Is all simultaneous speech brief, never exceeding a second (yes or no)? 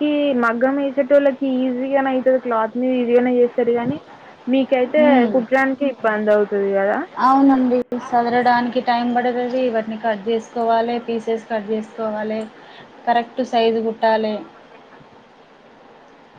yes